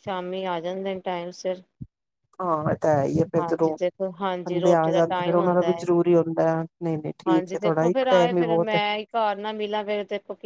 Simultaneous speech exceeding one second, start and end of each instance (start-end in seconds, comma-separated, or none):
4.5-5.8, 7.3-8.8